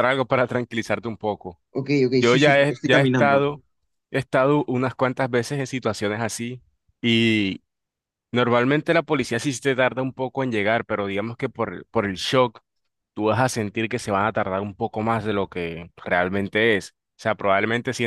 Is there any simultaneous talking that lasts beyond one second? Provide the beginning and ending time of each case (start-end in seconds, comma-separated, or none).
2.1-3.5